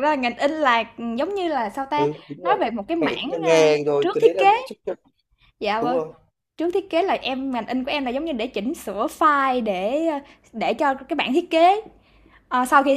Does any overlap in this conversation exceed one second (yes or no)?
yes